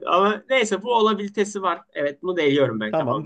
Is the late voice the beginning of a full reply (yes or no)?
yes